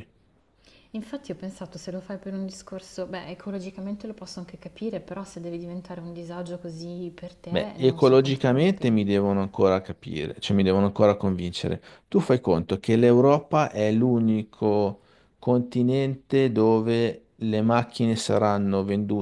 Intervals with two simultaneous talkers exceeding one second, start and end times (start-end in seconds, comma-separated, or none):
7.5-8.9